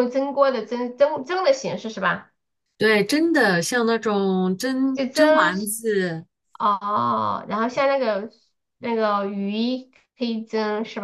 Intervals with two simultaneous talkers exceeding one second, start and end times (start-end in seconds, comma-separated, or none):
none